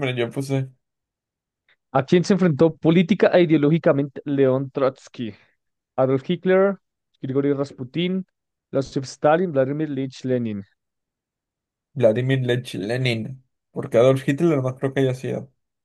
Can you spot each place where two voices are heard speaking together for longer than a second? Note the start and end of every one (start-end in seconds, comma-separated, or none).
none